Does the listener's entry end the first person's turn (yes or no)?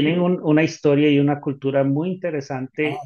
no